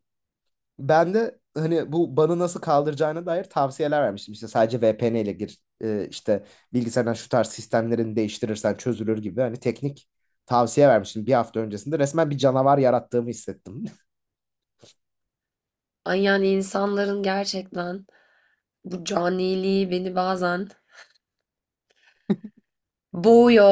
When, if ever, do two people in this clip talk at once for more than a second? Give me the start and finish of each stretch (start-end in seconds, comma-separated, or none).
none